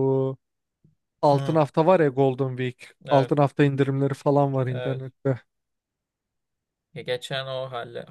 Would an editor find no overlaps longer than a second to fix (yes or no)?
yes